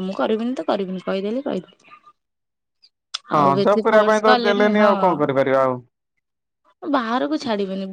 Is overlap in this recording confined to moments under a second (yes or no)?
no